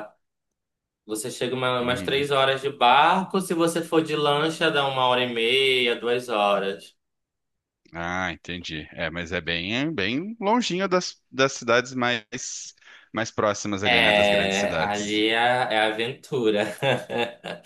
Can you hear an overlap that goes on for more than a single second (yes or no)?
yes